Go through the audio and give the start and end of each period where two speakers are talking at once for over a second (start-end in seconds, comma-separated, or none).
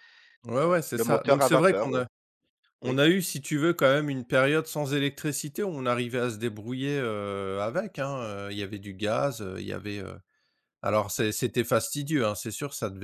0.6-1.9